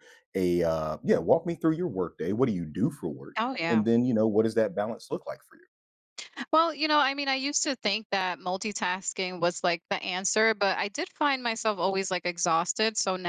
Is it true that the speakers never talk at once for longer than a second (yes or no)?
yes